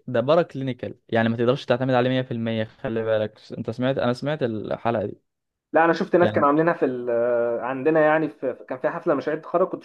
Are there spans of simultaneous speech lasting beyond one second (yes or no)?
no